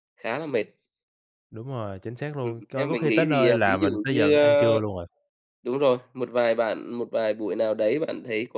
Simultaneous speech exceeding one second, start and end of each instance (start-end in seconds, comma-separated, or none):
2.4-4.8